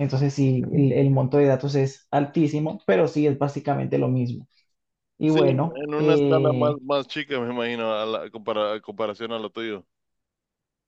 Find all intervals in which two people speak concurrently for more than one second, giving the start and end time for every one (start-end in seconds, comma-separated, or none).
5.2-6.8